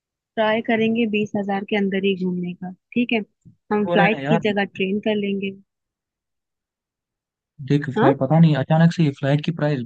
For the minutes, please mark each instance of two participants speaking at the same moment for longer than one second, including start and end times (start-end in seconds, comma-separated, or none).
none